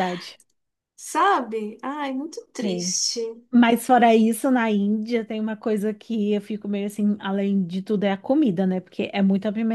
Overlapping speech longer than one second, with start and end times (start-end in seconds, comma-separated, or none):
none